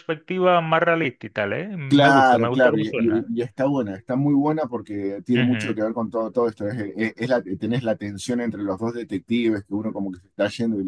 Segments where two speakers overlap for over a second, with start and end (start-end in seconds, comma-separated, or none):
1.9-3.3